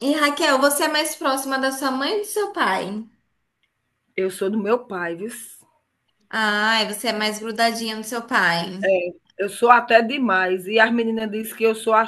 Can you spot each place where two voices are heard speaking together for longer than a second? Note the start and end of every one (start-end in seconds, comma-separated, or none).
none